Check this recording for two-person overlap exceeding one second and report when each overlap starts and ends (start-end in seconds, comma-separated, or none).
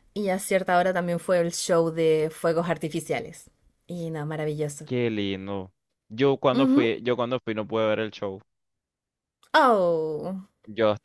none